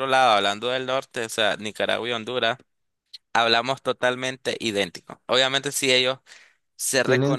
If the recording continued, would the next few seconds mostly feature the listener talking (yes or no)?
no